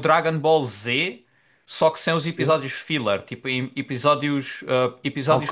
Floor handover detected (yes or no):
yes